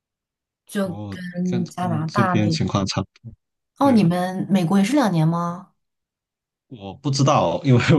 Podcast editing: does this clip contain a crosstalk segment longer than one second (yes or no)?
yes